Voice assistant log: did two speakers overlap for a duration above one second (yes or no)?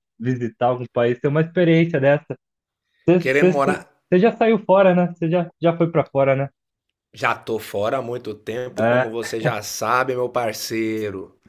no